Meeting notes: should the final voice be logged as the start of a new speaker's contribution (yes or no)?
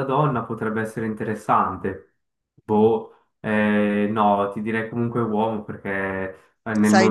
no